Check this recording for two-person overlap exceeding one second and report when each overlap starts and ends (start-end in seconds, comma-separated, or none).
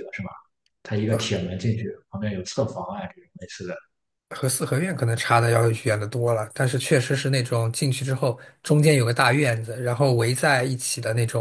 none